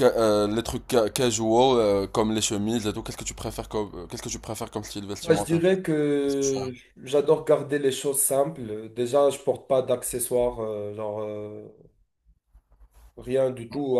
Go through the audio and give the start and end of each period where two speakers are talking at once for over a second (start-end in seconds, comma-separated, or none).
none